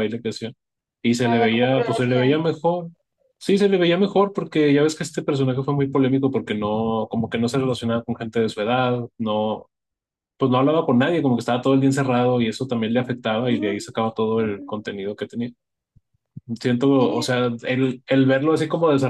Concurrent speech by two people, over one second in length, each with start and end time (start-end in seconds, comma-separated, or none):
1.2-2.4